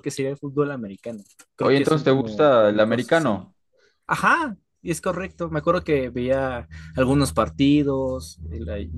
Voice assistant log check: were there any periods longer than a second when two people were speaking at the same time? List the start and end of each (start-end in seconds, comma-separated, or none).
1.6-3.5